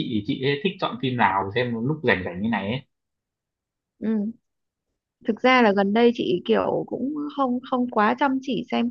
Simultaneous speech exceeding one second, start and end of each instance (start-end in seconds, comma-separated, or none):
none